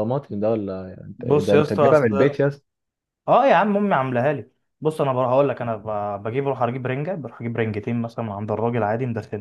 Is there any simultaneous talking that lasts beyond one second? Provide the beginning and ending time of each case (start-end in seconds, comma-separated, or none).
1.2-2.4